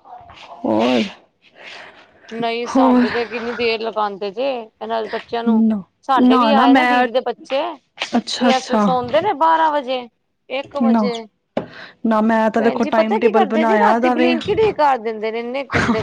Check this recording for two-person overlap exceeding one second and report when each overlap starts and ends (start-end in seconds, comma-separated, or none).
12.6-14.3